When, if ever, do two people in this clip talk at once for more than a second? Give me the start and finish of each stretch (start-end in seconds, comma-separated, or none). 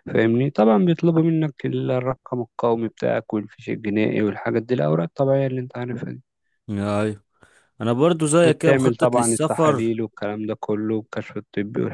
8.4-9.9